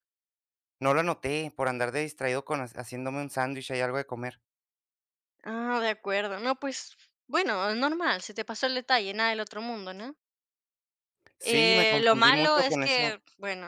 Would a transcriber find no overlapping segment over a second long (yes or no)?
no